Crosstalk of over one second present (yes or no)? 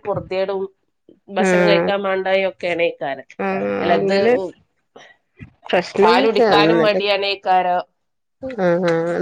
no